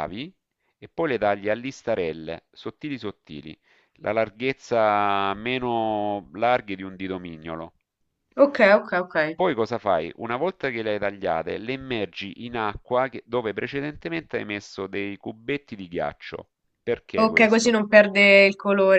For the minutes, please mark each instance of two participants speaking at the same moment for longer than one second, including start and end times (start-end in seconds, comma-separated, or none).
none